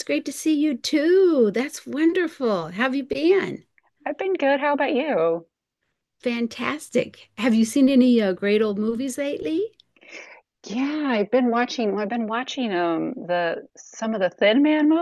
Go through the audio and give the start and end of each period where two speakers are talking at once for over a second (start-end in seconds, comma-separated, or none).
none